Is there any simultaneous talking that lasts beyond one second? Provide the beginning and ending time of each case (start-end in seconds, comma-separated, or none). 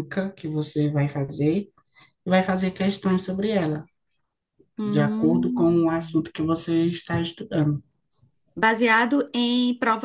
4.8-6.2